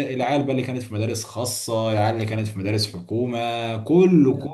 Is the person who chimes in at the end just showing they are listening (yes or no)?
yes